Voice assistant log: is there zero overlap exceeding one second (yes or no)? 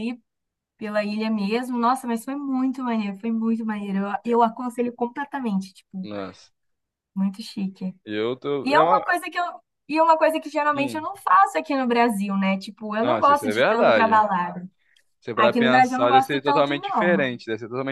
no